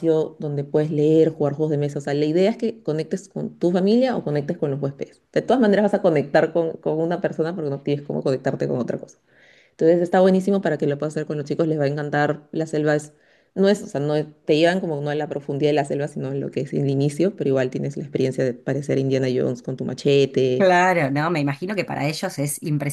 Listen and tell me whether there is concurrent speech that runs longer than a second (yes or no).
no